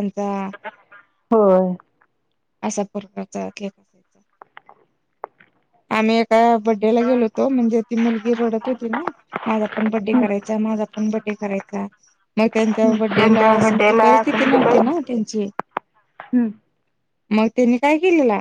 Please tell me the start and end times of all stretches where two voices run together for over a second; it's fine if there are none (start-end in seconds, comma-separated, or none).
12.8-15.0